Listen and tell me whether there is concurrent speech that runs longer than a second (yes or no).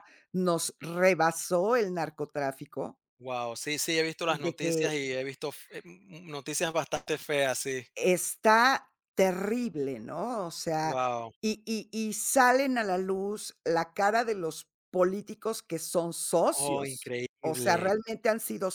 yes